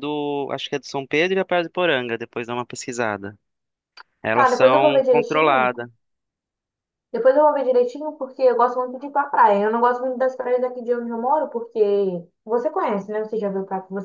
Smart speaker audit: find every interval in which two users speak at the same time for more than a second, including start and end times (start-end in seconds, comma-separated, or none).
4.3-5.7